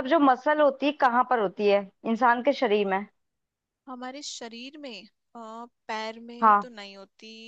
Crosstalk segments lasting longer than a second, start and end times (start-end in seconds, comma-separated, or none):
none